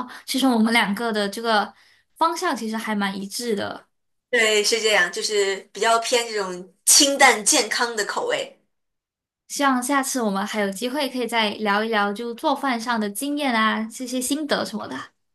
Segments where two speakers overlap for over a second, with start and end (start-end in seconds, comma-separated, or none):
none